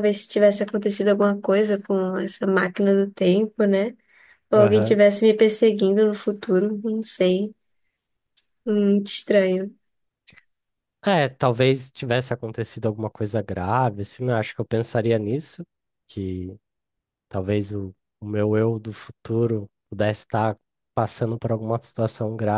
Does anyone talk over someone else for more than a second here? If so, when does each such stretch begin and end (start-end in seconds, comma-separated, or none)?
none